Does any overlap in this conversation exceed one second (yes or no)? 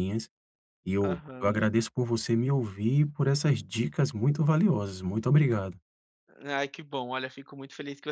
no